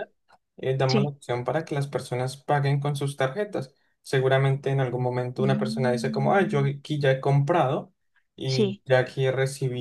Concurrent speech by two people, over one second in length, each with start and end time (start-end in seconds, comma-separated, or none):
5.4-6.7